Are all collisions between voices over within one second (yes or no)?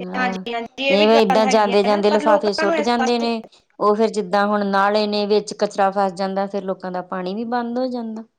no